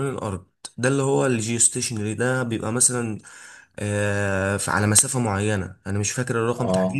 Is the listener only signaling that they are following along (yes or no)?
yes